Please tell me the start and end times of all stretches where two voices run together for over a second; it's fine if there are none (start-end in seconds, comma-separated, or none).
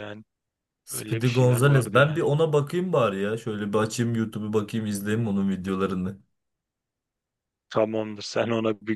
0.9-2.2